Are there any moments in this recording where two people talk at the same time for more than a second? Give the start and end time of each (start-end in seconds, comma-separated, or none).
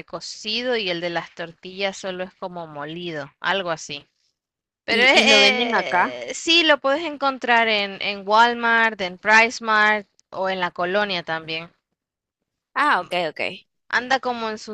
4.9-6.2